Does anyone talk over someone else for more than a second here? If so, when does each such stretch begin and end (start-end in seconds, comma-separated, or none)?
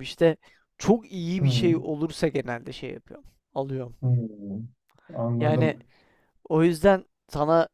none